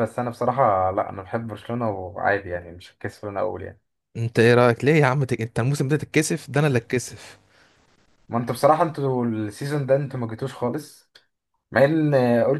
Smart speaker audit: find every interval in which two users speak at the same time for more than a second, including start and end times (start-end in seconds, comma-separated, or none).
none